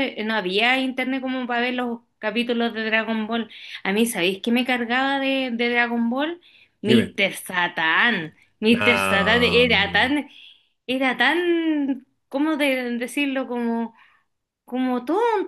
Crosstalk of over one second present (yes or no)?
yes